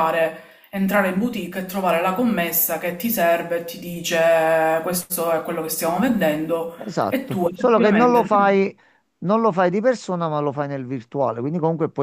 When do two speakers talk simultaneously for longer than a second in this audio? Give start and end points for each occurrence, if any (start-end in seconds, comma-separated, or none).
6.8-8.3